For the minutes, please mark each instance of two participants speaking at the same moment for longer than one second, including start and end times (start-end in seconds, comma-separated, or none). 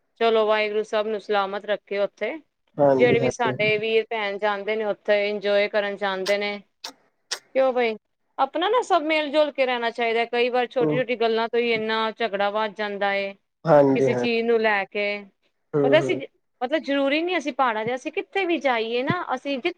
none